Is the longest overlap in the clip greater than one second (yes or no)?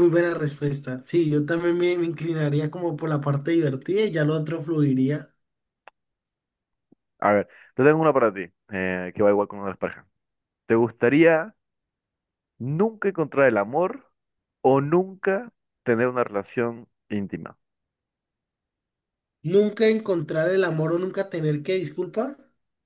no